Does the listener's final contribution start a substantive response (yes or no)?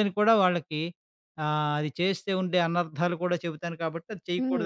yes